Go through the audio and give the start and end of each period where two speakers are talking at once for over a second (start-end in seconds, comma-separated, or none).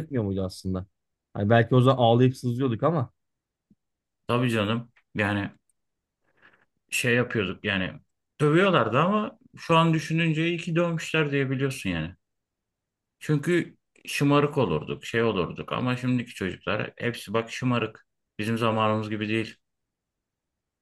none